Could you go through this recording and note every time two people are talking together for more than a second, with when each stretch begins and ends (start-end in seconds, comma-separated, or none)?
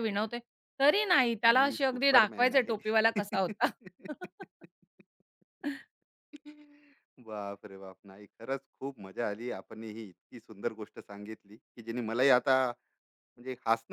1.5-2.7